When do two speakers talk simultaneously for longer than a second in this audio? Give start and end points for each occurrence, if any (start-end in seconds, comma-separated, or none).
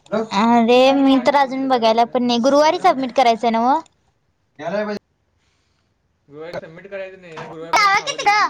0.8-3.0